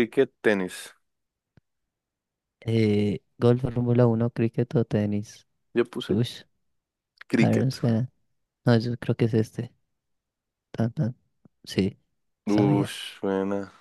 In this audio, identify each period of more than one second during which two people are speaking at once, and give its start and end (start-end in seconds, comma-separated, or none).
none